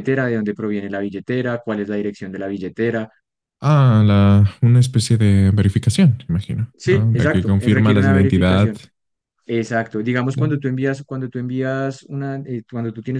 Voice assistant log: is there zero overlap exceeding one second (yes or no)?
no